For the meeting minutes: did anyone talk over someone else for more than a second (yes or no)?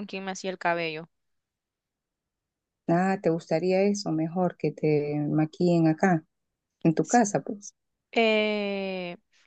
no